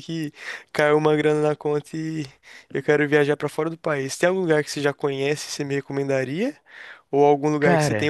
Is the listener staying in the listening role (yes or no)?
yes